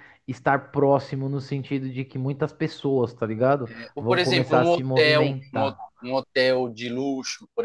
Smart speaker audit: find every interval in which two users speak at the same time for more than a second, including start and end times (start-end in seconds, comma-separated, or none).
3.9-5.8